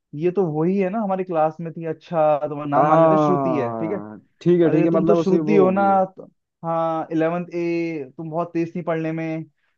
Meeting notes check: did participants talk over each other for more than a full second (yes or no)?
yes